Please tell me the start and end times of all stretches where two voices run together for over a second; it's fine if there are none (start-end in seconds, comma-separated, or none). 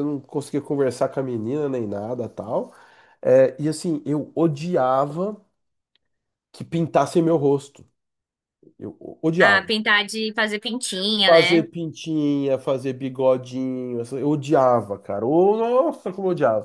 none